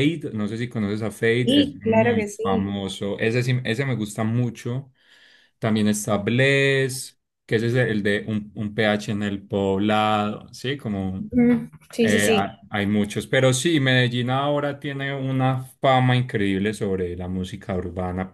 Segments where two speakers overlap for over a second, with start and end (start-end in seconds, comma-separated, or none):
1.4-2.8